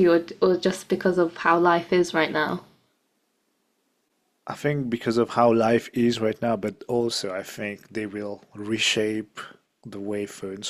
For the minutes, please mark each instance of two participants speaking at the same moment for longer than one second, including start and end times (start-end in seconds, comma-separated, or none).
none